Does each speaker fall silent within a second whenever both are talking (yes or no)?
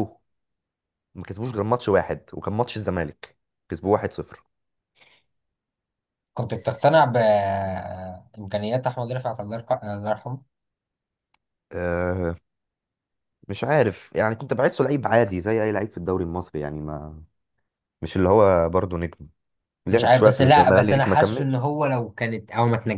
no